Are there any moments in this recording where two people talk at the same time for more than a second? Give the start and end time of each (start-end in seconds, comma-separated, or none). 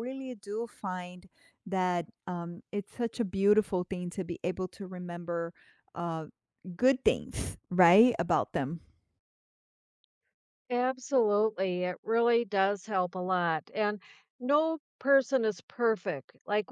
none